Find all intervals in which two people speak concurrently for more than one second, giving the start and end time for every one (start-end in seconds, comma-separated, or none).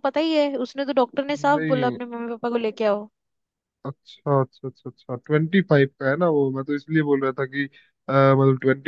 none